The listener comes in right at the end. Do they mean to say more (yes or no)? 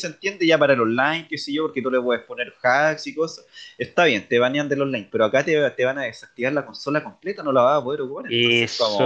yes